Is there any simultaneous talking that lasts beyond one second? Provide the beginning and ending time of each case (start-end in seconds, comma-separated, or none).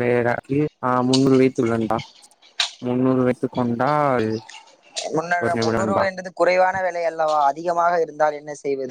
none